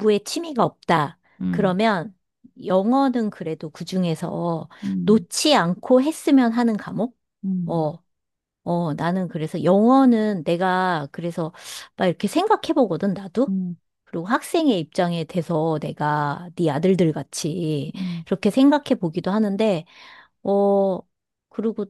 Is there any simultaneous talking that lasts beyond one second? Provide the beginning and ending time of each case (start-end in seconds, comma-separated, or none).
none